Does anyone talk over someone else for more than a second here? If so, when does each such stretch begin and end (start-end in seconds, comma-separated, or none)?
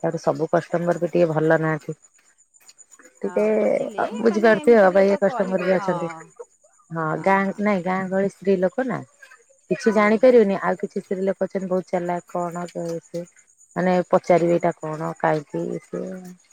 4.2-5.9